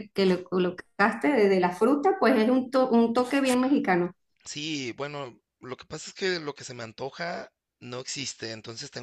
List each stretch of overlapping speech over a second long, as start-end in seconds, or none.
none